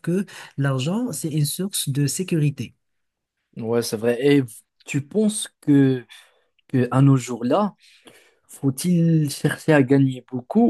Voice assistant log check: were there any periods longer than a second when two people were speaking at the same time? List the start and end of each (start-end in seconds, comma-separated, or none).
none